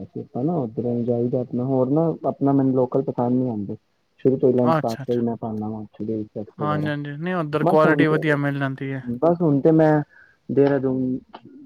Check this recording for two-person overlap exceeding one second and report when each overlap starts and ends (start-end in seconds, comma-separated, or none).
none